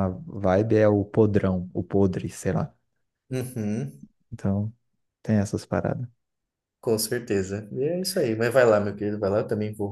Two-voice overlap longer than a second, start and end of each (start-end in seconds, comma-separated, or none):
none